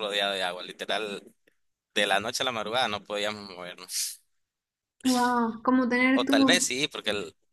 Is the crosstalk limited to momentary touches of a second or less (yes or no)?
yes